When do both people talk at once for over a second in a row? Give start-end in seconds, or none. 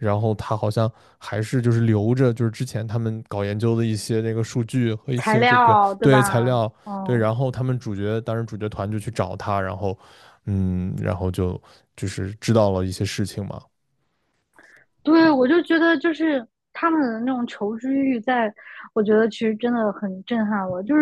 5.2-7.3